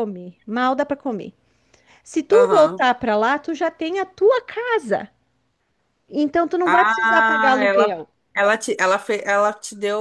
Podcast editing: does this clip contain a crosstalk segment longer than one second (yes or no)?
yes